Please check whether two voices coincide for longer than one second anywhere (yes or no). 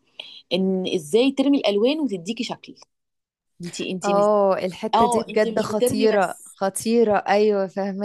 yes